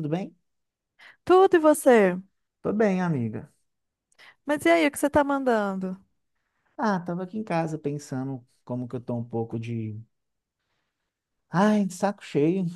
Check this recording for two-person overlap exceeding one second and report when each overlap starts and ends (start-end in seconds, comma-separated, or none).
none